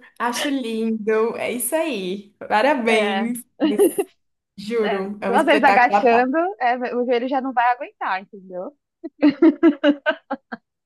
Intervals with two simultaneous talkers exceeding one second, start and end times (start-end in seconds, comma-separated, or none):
4.8-6.3